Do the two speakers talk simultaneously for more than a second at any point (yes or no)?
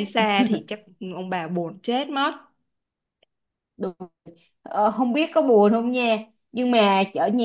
no